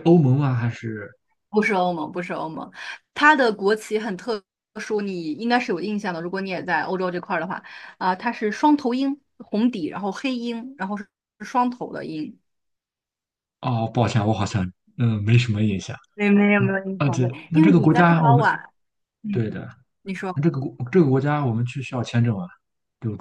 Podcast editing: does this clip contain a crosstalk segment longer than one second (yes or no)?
yes